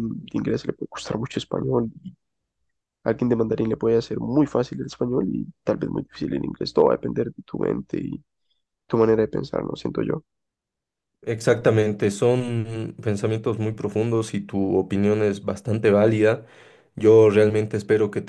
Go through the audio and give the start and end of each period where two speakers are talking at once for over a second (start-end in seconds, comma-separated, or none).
none